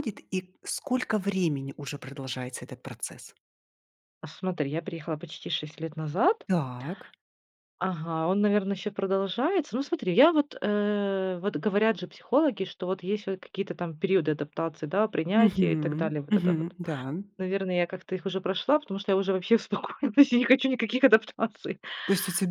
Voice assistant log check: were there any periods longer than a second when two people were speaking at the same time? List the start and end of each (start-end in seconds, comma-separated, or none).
15.3-16.8